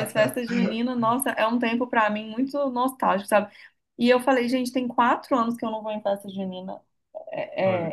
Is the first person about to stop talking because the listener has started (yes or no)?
no